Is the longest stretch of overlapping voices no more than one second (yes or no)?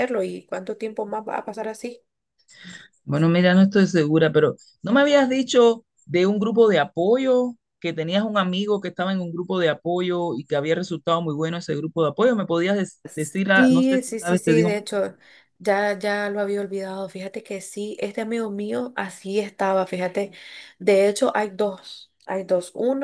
no